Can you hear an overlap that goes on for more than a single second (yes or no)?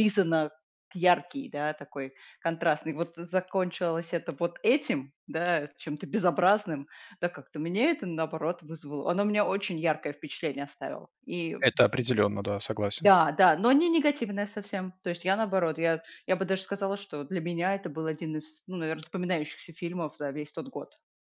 no